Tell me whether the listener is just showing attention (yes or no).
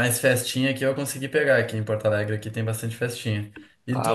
yes